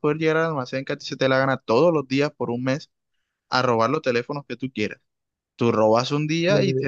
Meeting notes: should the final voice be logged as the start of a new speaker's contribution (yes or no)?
no